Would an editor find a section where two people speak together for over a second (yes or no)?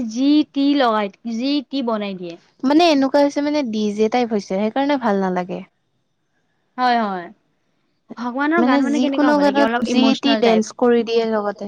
yes